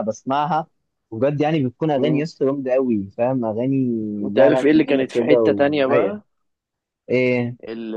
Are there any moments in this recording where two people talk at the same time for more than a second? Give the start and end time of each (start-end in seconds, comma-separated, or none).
4.3-6.2